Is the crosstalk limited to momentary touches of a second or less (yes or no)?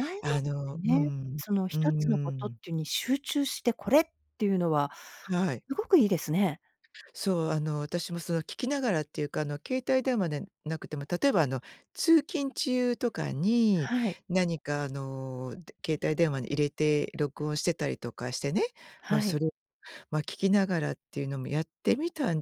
no